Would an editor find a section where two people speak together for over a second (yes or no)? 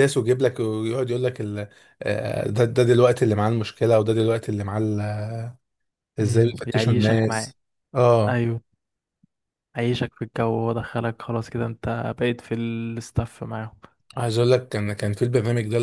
yes